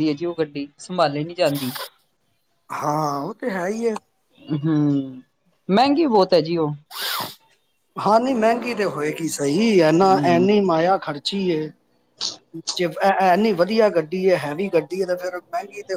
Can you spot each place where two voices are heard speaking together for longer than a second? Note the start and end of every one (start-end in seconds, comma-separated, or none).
none